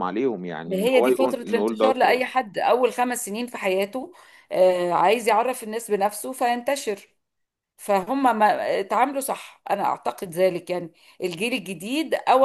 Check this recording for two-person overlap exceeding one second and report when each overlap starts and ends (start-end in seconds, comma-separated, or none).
0.7-2.2